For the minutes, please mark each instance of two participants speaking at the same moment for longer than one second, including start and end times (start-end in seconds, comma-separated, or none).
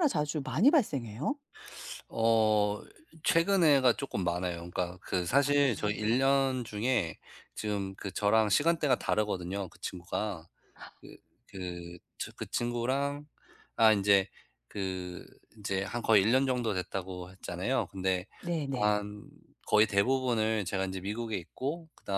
none